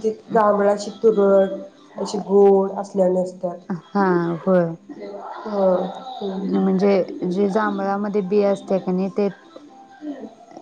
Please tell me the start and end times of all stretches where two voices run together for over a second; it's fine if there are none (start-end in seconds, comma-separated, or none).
none